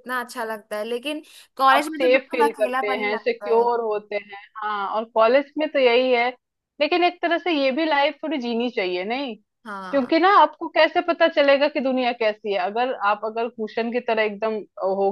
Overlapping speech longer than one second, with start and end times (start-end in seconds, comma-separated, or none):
1.8-3.7